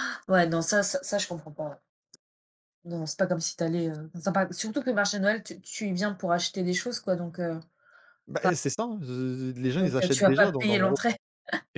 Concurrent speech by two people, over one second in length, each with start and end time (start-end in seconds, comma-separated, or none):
9.8-11.0